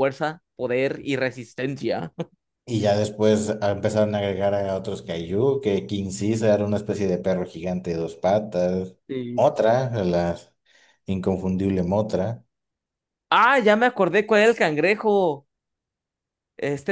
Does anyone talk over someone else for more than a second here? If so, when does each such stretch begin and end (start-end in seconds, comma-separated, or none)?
none